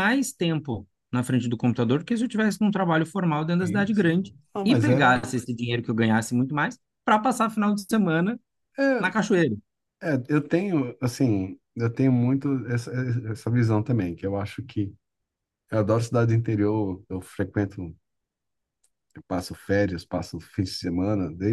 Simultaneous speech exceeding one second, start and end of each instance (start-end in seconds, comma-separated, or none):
3.6-5.2